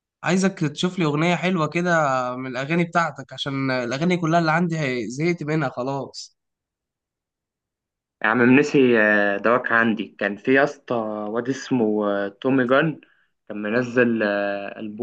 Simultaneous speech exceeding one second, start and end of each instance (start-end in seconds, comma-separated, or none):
none